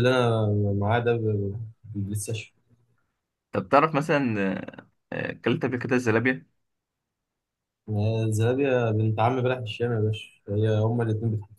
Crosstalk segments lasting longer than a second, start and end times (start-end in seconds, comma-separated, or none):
none